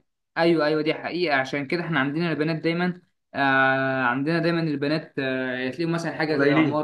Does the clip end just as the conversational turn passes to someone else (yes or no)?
no